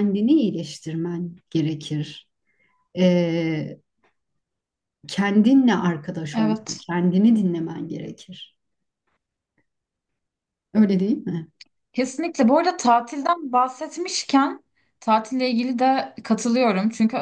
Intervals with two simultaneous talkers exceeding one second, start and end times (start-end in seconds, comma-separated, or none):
none